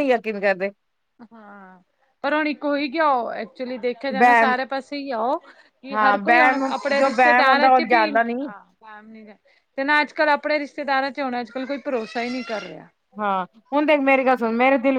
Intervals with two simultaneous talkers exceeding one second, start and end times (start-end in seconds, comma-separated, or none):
5.9-8.3